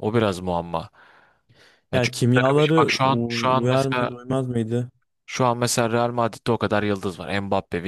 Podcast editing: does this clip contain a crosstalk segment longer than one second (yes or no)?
yes